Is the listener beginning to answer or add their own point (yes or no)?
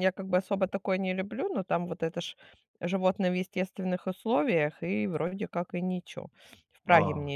no